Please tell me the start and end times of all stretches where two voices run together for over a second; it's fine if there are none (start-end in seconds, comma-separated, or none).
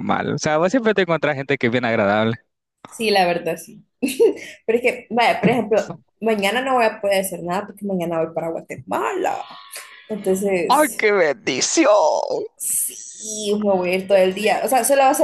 none